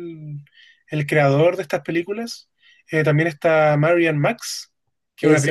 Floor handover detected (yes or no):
yes